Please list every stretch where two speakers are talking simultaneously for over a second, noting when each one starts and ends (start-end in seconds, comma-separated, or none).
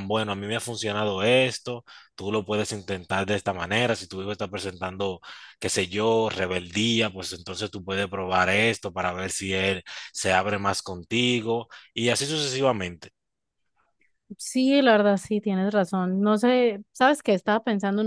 none